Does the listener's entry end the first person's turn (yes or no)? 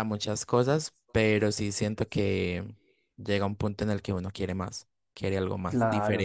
yes